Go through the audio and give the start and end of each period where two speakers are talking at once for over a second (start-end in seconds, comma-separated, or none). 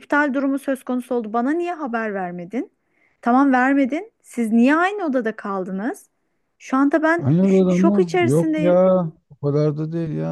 7.2-8.8